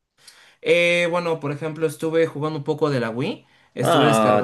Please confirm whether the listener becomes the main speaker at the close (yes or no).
yes